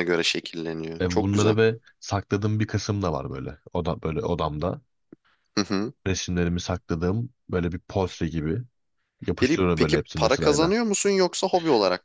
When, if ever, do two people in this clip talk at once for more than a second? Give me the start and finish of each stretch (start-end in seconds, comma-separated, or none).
9.3-10.7